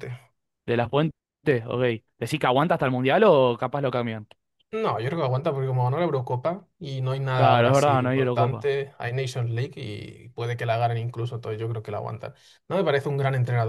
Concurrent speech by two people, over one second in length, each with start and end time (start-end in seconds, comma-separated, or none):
7.3-8.7